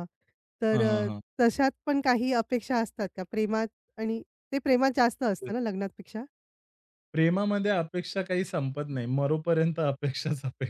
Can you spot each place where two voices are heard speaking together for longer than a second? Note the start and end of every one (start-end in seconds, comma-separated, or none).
none